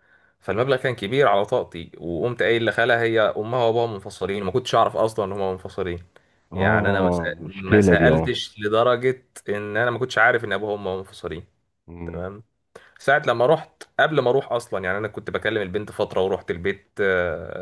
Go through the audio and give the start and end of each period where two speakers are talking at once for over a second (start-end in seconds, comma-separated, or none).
6.5-8.4